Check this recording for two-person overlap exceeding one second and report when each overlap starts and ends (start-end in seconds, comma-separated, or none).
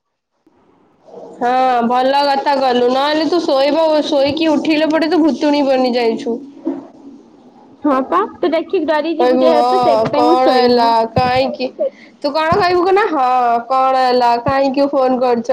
9.2-10.9